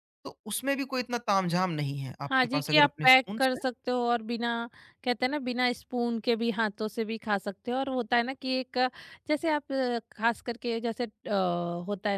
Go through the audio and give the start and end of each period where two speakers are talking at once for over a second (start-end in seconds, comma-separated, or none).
2.3-3.6